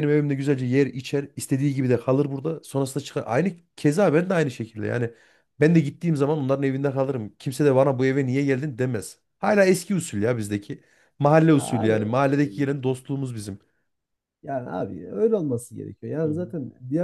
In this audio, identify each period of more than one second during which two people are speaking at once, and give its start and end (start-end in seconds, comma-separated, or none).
none